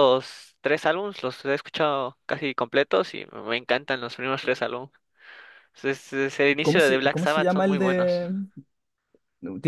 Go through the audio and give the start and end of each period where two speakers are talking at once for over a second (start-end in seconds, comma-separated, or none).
6.6-8.2